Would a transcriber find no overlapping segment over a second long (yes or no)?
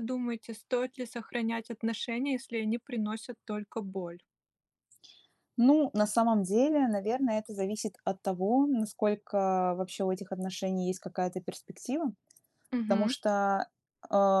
yes